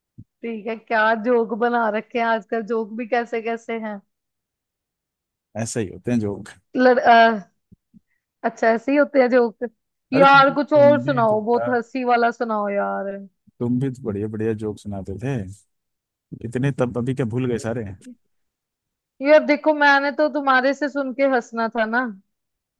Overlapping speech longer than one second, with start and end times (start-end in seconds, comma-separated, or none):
10.1-11.7